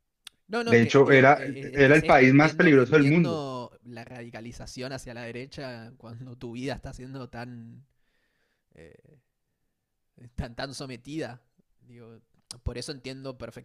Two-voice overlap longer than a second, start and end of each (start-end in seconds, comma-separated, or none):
0.7-3.4